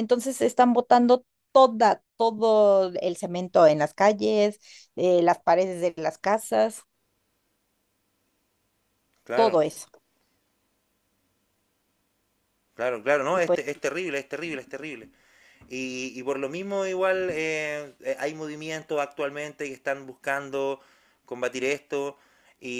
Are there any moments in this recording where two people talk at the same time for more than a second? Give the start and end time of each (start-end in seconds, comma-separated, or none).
none